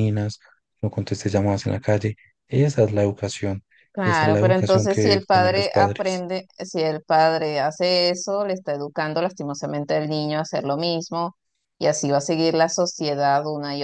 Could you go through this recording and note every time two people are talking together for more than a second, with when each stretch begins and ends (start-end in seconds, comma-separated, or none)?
3.9-6.2